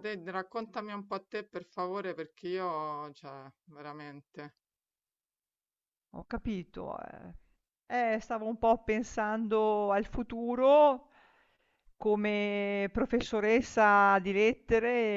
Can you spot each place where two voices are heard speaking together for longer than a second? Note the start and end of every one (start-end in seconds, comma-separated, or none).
none